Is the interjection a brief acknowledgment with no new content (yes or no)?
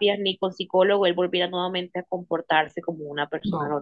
no